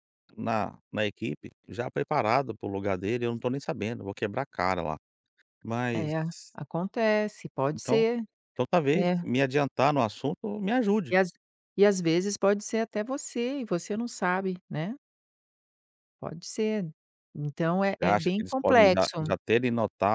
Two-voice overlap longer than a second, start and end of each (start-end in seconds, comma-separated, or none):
18.0-19.3